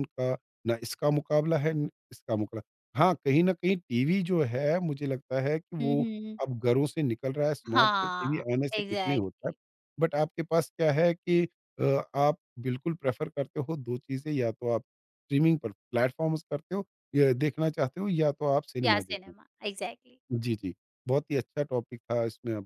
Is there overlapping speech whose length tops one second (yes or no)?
yes